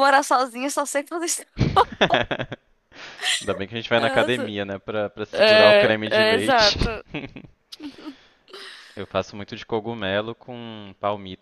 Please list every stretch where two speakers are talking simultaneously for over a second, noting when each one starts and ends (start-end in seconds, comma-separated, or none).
5.3-6.8